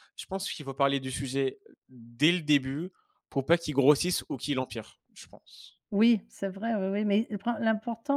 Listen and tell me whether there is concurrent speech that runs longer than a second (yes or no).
no